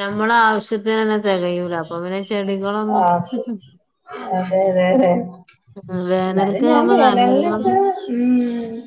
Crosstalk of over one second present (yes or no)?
yes